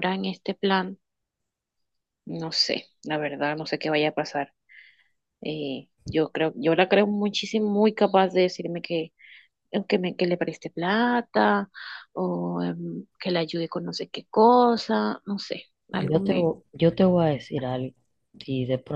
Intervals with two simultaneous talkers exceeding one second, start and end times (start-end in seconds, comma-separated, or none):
none